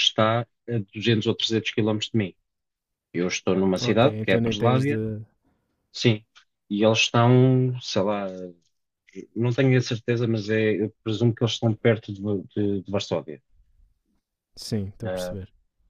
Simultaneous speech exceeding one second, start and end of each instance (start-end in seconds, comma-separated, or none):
3.8-5.0